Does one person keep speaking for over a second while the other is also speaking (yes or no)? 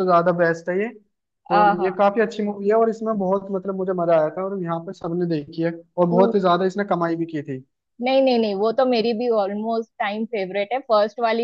no